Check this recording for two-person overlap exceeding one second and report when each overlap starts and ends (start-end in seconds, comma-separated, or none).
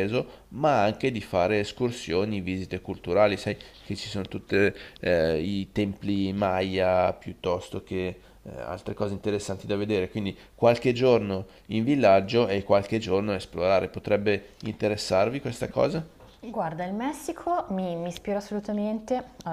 none